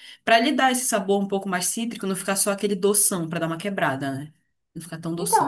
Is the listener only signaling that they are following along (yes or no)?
no